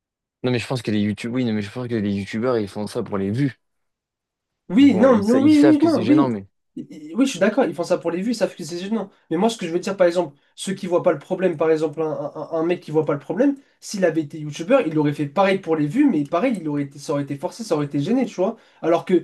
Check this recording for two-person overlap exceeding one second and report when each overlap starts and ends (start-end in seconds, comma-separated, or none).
4.8-6.3